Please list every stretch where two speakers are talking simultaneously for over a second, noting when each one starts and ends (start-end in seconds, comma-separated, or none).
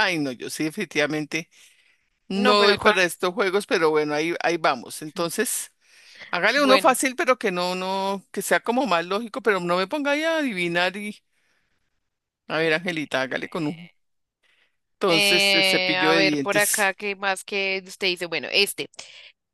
15.1-16.9